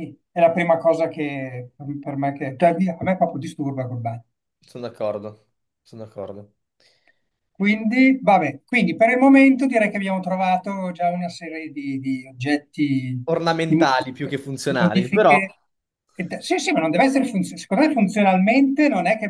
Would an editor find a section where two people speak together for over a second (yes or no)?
yes